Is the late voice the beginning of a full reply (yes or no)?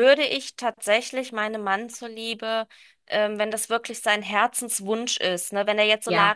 no